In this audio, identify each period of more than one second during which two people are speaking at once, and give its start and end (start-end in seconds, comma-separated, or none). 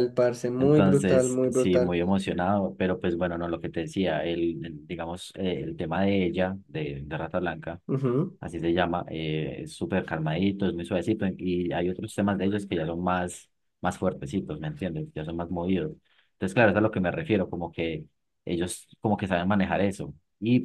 0.6-2.0